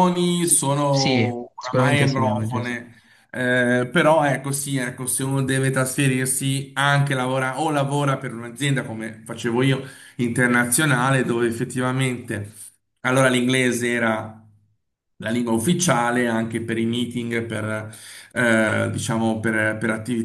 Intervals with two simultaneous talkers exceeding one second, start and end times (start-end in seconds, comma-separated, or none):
0.9-2.8